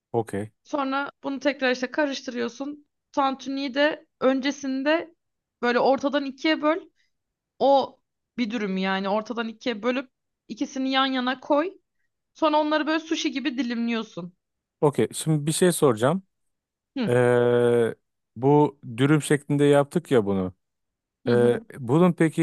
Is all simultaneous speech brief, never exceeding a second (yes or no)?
yes